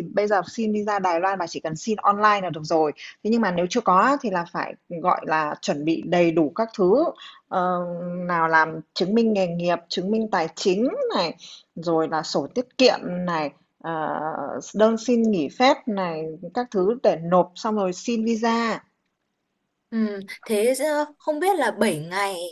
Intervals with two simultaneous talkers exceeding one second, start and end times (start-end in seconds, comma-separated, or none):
none